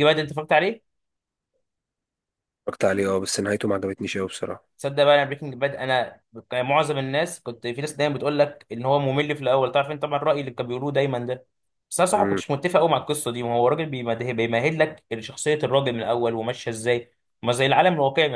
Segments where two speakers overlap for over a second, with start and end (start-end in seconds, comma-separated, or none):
none